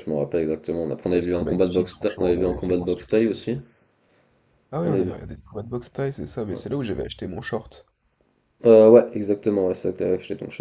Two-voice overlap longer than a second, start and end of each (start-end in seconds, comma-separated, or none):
1.1-3.5